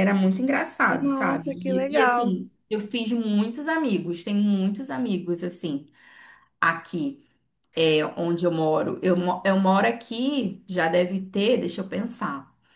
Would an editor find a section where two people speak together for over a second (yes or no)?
yes